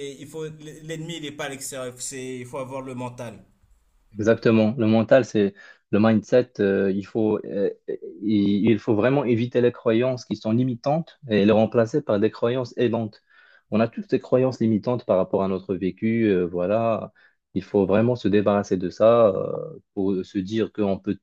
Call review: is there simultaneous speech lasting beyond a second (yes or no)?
no